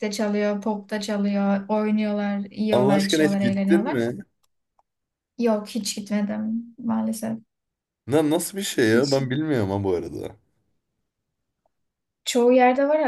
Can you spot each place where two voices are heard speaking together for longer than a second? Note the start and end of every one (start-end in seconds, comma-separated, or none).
2.7-4.0